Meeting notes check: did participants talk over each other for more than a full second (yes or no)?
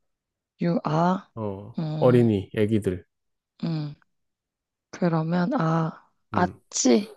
no